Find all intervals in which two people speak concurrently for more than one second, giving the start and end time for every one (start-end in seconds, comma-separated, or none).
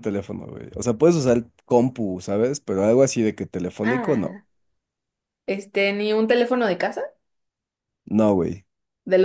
none